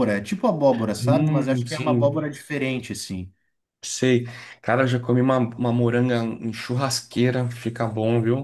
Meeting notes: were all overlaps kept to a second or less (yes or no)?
no